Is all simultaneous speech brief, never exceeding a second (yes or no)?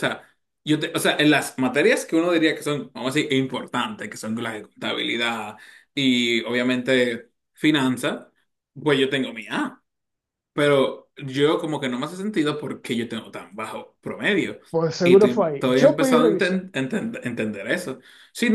no